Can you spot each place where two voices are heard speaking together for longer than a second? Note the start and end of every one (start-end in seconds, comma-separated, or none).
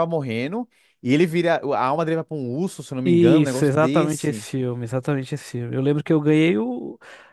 3.0-4.5